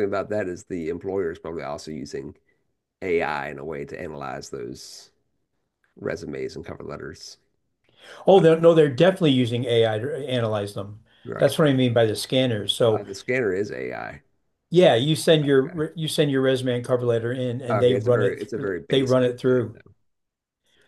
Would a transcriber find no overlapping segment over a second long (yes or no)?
no